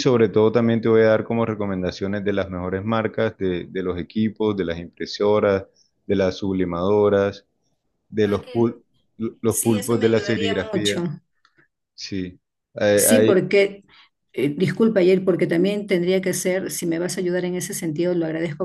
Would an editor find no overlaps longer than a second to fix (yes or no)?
no